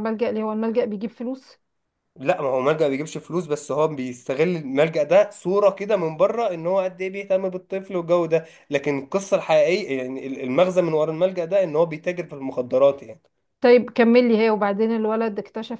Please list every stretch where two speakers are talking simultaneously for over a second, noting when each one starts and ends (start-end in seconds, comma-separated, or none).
none